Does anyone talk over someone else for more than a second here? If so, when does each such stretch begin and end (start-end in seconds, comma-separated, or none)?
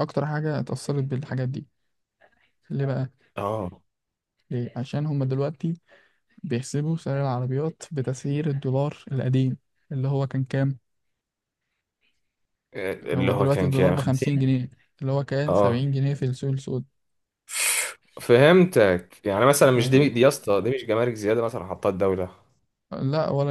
13.2-14.5